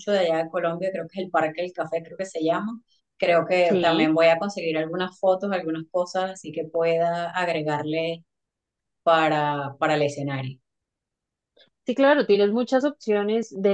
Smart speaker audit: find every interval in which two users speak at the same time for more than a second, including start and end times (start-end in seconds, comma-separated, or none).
none